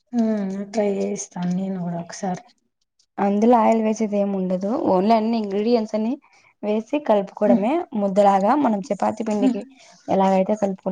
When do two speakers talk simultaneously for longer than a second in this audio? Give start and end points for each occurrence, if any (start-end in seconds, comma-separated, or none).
none